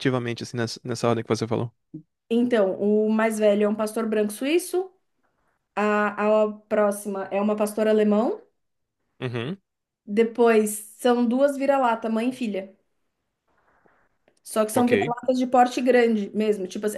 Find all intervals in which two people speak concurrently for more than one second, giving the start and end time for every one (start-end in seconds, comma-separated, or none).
none